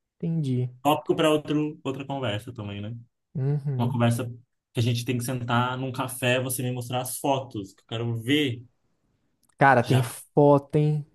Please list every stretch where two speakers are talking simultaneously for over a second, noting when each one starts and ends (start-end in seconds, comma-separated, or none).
none